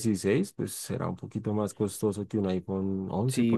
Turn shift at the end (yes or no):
yes